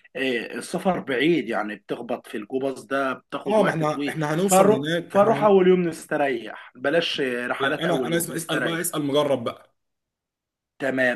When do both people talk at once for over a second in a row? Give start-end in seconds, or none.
3.5-5.6, 7.6-8.8